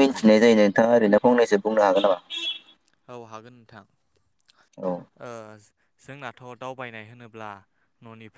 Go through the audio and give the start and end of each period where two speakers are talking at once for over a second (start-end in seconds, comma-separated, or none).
none